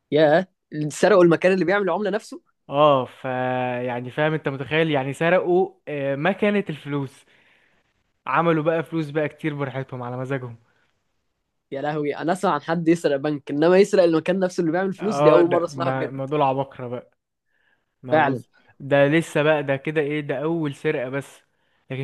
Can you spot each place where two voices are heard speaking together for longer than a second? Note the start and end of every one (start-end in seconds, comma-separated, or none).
15.0-16.2